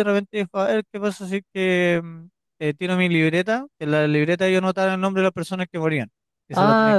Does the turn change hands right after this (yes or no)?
yes